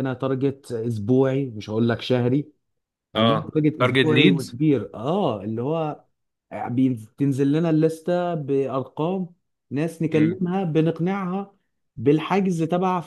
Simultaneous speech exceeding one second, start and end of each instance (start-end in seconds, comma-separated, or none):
3.1-4.6